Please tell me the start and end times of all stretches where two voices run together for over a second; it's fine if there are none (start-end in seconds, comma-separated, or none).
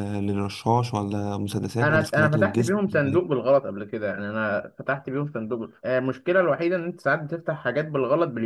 1.8-3.2